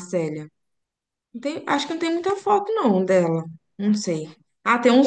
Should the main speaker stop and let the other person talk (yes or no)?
no